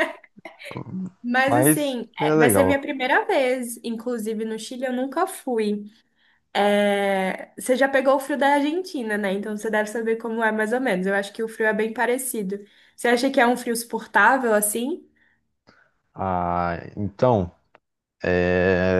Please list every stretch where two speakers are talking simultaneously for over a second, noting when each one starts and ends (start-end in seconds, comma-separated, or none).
1.5-2.9